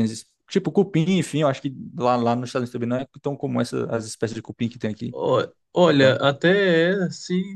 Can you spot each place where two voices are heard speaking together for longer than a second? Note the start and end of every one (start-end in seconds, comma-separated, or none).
none